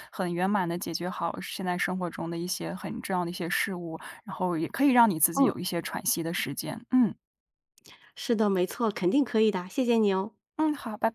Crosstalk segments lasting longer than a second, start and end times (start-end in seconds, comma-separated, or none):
none